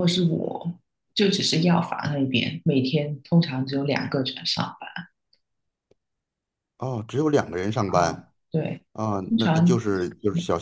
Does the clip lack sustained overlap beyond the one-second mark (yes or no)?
yes